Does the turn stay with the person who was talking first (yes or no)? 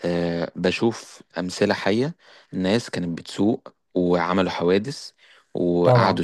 yes